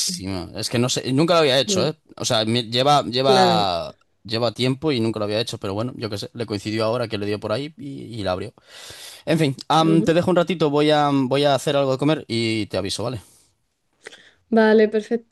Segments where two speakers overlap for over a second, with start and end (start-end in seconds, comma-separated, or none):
none